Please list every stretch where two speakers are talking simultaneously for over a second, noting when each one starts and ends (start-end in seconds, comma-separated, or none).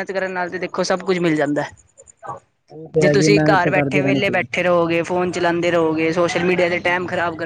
3.0-4.5